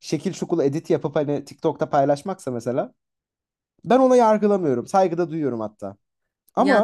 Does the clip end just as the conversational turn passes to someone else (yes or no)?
yes